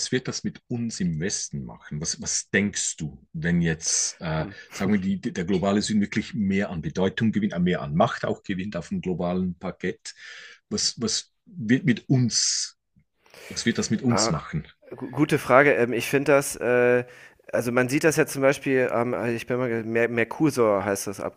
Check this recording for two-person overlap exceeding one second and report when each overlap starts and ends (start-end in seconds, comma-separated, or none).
none